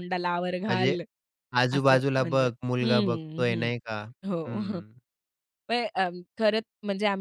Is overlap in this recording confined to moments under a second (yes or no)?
no